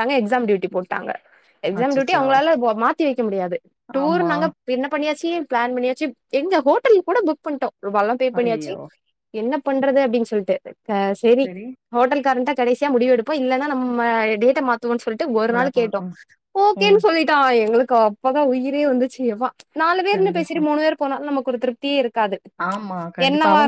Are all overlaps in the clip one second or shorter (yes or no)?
yes